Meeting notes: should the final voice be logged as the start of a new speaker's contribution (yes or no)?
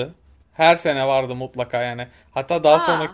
no